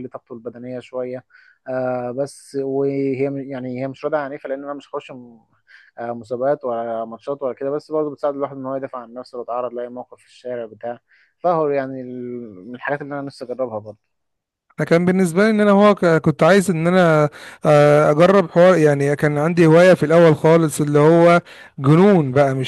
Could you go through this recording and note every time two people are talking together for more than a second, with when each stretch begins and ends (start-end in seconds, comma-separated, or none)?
none